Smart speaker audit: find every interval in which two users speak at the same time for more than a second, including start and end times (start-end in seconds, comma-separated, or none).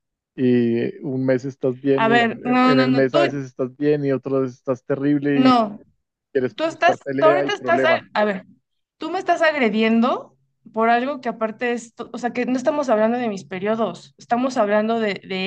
2.0-3.4, 6.5-8.1